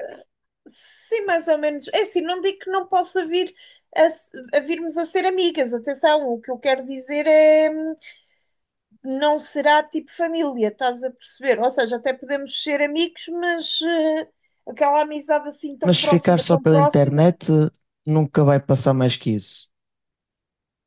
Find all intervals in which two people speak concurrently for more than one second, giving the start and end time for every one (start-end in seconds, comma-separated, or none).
15.8-17.2